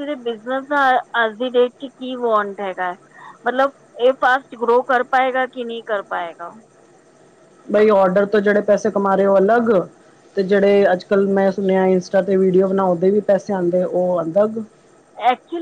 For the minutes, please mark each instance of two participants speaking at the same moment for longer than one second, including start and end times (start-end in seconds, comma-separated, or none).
none